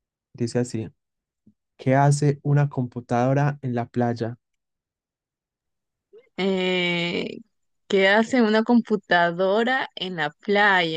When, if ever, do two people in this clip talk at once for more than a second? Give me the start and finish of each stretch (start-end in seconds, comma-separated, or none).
none